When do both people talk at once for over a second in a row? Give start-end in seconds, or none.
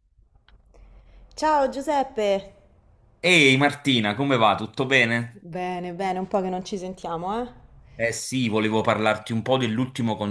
none